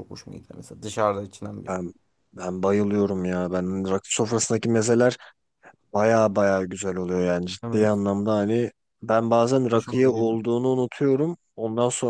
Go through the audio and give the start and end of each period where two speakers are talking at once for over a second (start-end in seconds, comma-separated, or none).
none